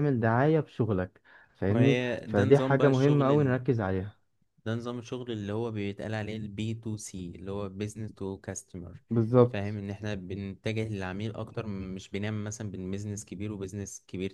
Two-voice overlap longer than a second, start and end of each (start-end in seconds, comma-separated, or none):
1.7-3.3